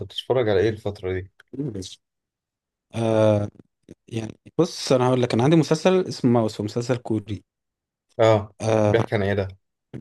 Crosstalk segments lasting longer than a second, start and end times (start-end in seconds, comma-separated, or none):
none